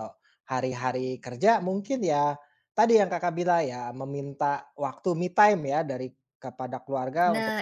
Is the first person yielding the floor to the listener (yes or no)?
no